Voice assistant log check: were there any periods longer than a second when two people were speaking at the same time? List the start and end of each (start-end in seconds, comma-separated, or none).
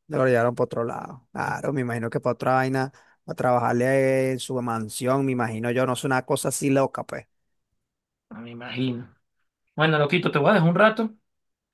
none